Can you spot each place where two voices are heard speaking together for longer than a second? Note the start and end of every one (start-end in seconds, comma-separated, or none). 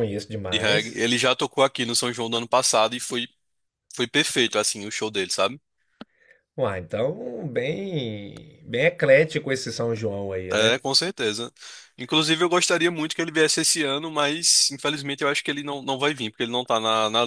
none